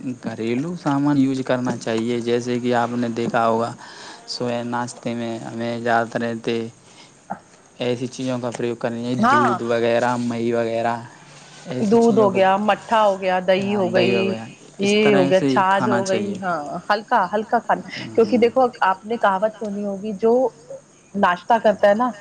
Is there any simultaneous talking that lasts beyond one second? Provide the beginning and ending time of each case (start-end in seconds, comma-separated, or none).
14.9-16.4